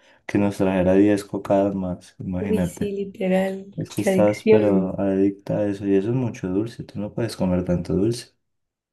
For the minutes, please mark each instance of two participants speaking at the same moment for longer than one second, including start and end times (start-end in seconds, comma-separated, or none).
3.8-5.0